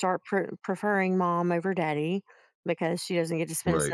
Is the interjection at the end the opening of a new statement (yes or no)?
no